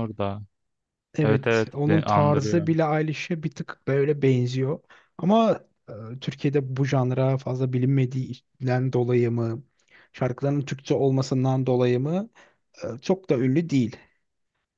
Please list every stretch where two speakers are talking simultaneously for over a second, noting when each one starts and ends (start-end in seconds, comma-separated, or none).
1.2-2.7